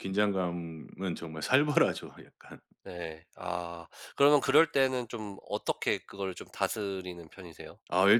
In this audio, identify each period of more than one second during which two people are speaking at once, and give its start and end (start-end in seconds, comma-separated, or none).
none